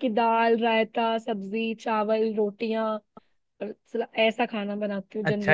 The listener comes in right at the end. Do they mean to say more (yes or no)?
yes